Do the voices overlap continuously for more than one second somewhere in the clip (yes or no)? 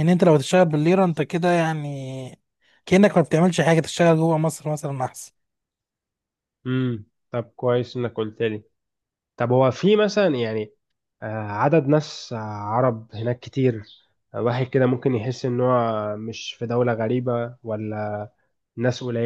no